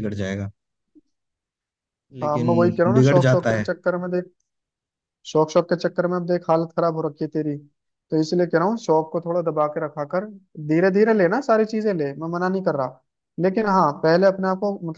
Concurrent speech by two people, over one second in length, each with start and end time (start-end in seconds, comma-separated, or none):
2.2-3.6